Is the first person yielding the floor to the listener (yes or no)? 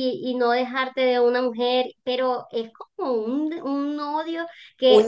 yes